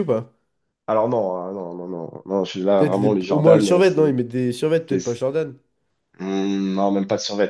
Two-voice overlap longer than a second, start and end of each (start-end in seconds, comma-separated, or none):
2.8-4.1